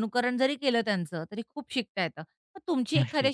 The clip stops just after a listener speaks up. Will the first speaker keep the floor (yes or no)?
yes